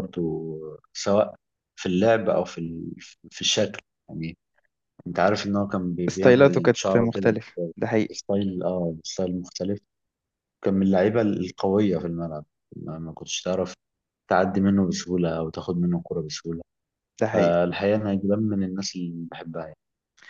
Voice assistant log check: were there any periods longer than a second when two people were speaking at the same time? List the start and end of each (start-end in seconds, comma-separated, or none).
6.1-7.3